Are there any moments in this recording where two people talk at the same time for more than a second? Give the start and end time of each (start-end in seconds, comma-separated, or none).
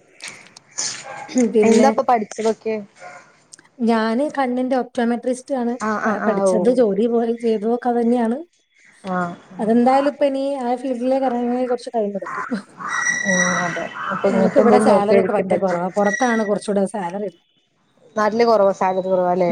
none